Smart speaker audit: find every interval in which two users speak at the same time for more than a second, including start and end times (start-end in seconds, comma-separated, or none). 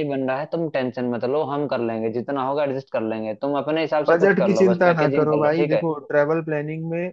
4.1-5.8